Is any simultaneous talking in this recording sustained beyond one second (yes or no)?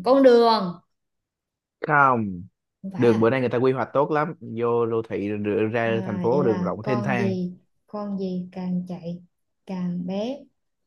yes